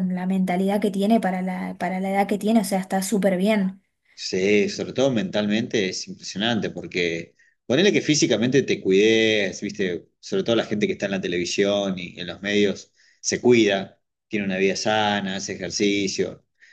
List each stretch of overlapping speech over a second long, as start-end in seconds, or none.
none